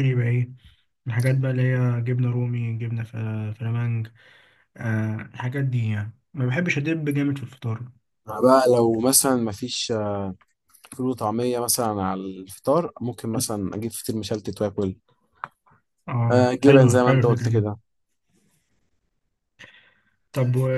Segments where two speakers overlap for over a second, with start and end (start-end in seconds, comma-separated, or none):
16.3-17.6